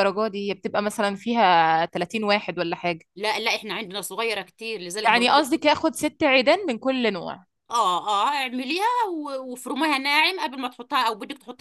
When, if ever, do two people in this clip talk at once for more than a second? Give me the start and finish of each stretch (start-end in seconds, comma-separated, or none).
none